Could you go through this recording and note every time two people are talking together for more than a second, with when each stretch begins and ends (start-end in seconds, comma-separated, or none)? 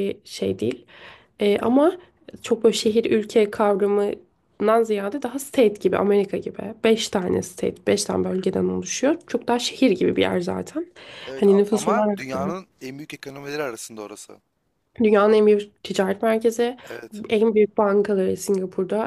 11.3-12.6